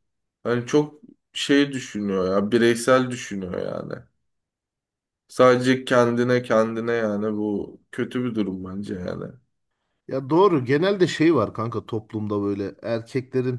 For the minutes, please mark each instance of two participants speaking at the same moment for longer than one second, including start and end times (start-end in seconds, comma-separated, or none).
none